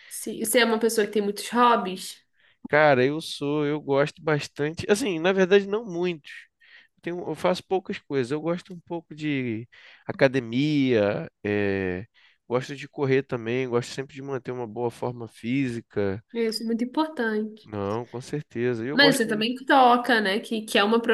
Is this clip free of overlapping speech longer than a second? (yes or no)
yes